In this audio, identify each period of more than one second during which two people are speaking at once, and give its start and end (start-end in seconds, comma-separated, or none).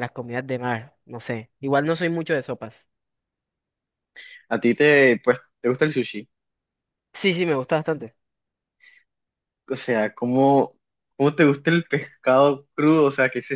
none